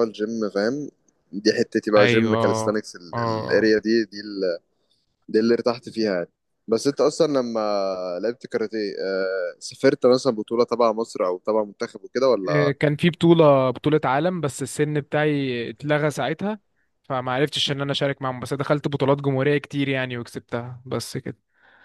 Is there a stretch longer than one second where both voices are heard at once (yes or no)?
yes